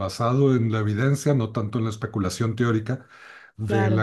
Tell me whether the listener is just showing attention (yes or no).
yes